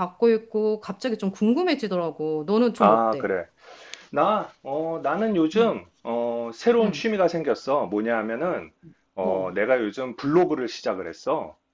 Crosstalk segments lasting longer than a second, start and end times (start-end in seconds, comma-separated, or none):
none